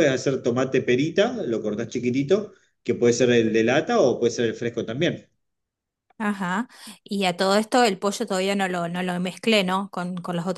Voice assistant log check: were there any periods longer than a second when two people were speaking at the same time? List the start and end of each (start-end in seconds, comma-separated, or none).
none